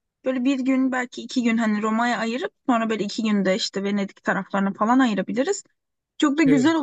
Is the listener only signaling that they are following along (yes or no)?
yes